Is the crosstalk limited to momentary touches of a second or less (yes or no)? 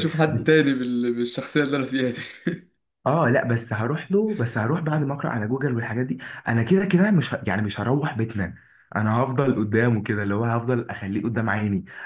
yes